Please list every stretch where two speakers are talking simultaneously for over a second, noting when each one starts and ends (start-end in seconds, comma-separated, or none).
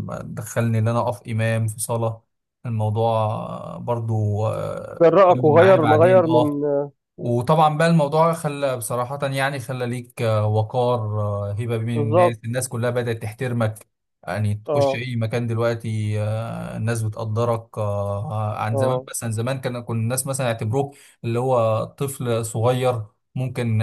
5.0-6.6